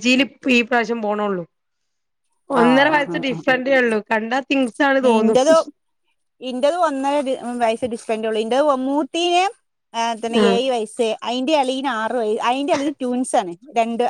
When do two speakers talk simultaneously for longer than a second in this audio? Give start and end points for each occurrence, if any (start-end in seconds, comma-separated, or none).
none